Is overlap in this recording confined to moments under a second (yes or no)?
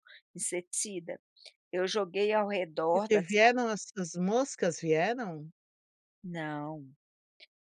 yes